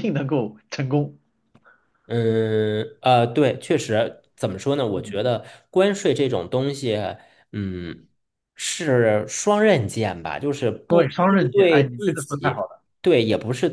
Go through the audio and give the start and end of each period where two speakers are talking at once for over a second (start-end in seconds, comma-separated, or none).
10.9-12.7